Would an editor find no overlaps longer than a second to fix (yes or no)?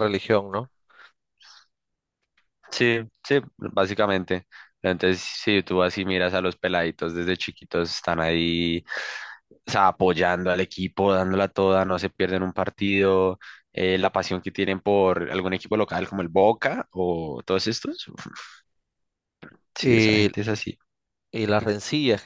yes